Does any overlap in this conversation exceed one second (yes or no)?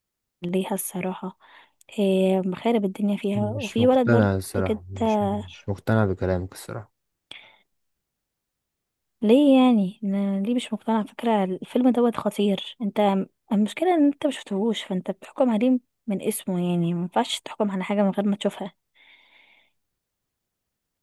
yes